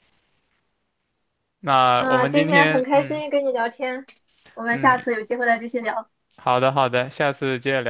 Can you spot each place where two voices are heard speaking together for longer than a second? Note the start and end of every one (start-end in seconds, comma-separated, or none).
2.0-3.2